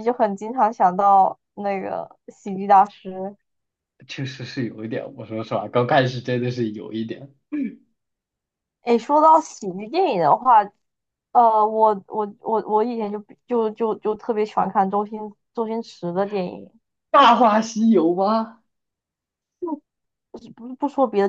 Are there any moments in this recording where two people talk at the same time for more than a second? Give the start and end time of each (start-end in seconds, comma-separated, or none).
none